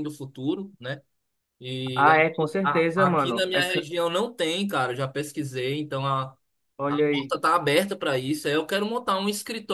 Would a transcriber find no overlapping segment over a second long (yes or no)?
no